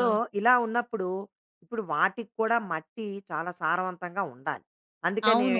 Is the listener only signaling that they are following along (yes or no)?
yes